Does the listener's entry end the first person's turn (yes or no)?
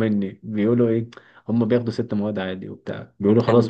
no